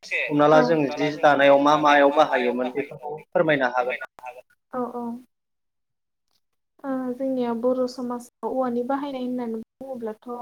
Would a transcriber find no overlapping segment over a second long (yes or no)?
yes